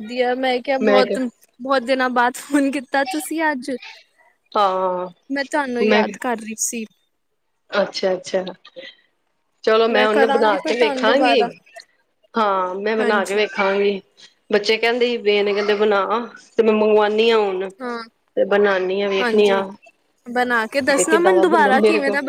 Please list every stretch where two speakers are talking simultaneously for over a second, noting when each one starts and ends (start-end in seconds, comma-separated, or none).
10.1-11.4